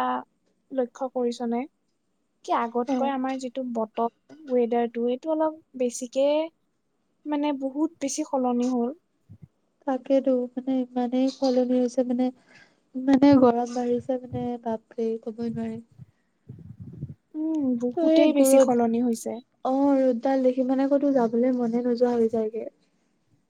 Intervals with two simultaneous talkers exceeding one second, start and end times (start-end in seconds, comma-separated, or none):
18.0-19.3